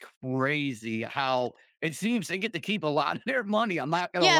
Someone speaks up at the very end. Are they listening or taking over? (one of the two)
taking over